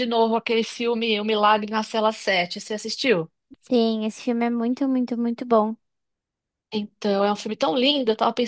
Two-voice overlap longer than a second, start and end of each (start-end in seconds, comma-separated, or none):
none